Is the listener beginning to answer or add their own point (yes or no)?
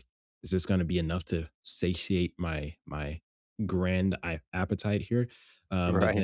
no